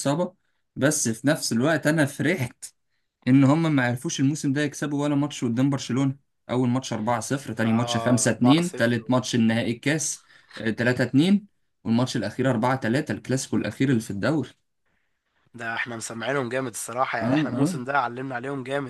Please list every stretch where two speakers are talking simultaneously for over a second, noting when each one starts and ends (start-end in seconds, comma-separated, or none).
7.6-9.0